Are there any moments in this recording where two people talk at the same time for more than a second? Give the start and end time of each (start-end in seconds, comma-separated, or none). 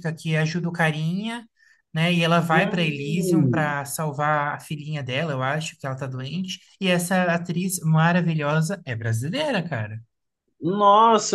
2.5-3.8